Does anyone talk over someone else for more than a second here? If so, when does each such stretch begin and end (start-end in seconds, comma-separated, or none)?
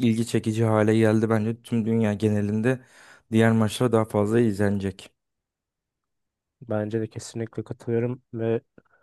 none